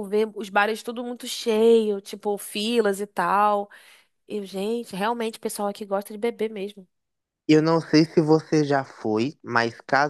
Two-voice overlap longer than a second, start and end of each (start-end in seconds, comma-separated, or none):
none